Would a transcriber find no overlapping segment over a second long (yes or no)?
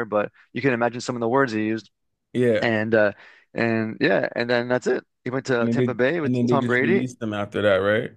no